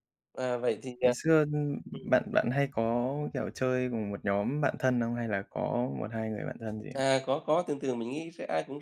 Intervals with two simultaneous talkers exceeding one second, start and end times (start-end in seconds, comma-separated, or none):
none